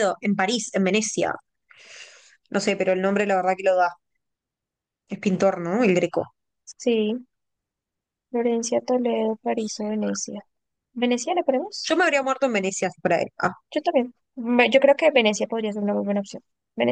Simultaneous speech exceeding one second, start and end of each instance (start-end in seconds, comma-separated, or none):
none